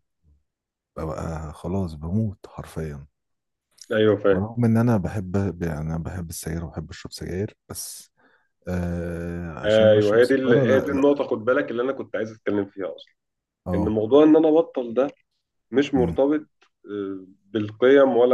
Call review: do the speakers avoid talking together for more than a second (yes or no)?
no